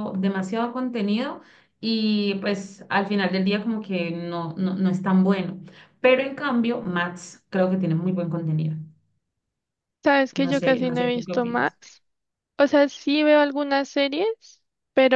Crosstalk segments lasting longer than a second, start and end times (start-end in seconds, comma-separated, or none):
10.4-11.7